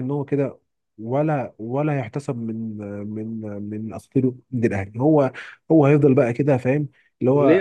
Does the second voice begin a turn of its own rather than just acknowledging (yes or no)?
yes